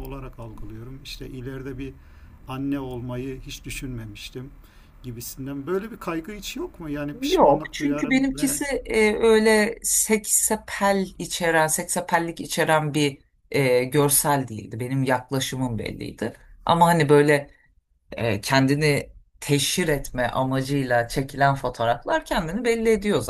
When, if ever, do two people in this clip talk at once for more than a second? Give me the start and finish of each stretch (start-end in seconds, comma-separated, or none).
7.2-8.6